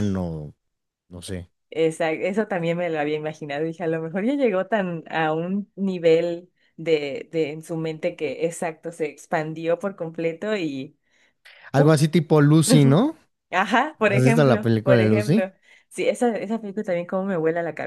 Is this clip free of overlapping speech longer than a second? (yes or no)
no